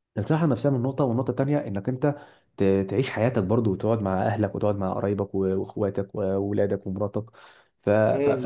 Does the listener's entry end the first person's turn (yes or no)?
yes